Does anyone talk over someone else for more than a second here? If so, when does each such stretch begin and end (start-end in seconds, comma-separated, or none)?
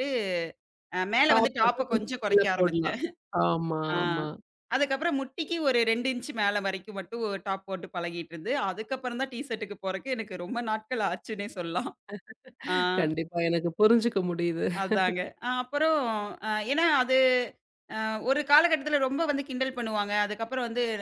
1.3-3.0